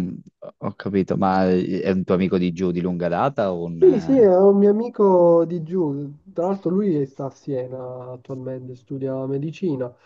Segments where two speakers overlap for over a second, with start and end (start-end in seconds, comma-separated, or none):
none